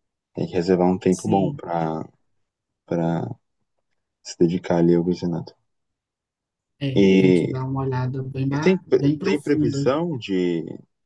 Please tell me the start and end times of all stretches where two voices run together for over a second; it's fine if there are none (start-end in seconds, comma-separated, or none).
8.5-9.8